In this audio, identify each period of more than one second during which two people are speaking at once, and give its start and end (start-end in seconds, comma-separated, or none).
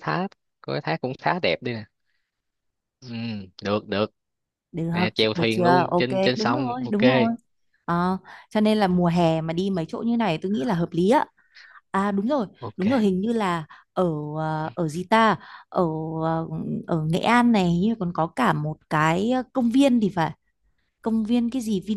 5.3-7.0